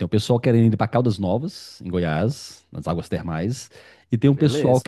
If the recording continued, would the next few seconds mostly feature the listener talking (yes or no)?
no